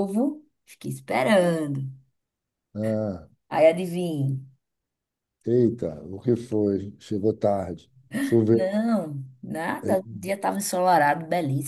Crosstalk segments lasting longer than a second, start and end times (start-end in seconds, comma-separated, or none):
none